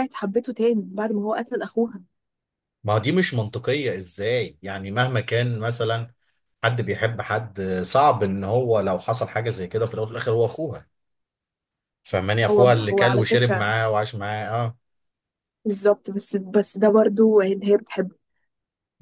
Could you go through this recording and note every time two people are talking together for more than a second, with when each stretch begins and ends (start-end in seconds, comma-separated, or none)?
12.5-13.7